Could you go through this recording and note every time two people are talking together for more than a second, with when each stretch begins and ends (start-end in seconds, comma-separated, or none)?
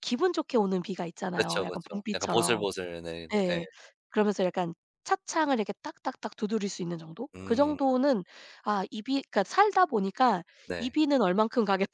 1.3-2.6